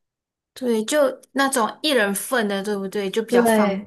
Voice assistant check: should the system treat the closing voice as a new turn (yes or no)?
no